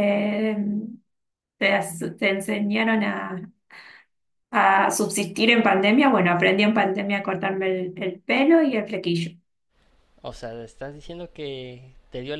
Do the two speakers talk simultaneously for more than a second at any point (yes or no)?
no